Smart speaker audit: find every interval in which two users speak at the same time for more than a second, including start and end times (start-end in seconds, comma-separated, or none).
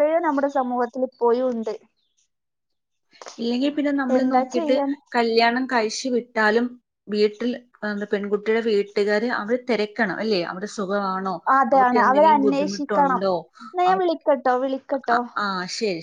11.7-13.2